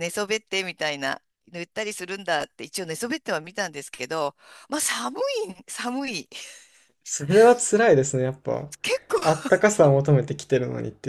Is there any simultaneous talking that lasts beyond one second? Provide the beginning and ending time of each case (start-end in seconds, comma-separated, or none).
none